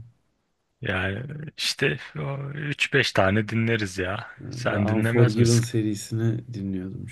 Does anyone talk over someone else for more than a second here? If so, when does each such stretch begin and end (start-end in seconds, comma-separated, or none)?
4.4-5.7